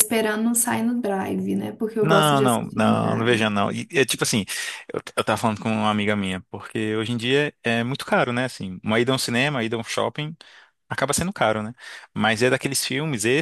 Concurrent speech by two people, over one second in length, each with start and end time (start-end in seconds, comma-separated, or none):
2.0-3.4